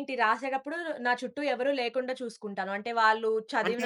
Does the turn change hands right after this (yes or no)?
no